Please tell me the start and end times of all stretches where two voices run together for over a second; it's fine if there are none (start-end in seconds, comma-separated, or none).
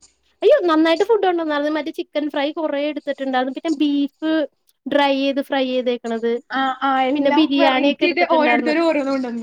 7.1-8.7